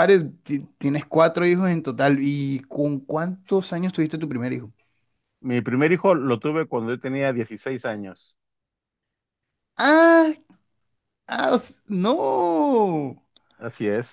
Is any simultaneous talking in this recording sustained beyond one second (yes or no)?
no